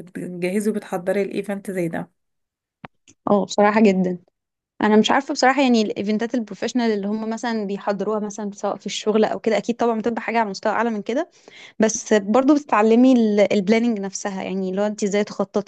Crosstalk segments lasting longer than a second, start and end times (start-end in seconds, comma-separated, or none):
none